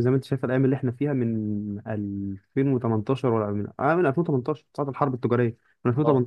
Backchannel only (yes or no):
yes